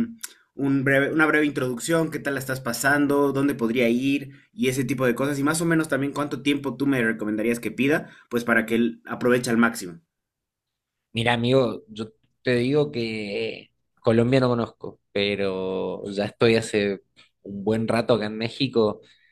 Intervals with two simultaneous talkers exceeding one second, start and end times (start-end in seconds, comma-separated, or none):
none